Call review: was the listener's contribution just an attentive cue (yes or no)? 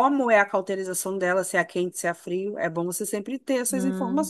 no